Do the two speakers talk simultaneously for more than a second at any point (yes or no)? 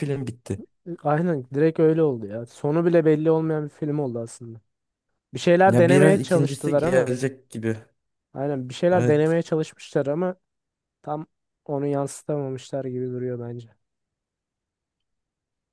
yes